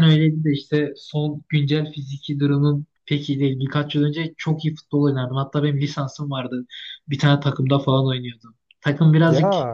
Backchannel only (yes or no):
yes